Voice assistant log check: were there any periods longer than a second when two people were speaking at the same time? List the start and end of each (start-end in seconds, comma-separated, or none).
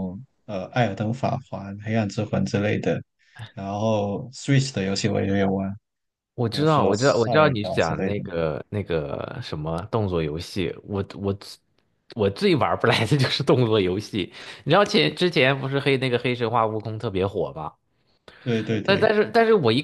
6.5-8.2